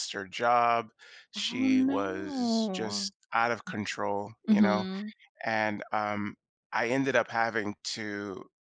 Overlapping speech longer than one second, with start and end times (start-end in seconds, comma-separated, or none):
1.4-3.1